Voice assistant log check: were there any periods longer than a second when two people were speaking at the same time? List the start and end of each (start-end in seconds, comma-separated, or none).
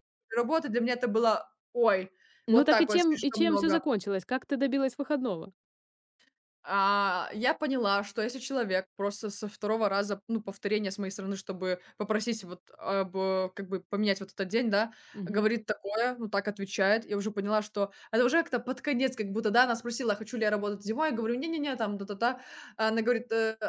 2.5-3.8